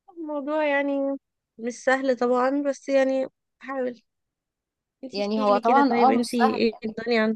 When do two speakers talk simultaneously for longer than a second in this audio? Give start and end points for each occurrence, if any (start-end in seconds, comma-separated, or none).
5.1-6.8